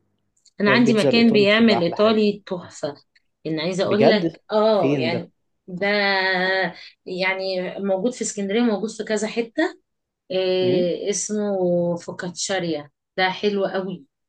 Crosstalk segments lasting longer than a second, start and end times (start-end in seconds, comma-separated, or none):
0.7-2.3, 3.8-5.2